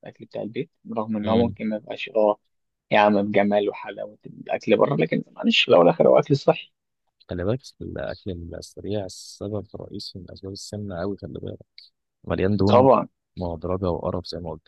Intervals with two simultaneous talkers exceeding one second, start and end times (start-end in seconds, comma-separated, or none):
none